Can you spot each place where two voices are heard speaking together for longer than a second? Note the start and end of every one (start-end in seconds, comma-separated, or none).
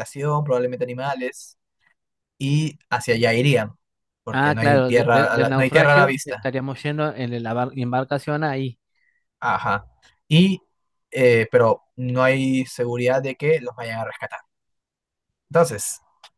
4.3-6.5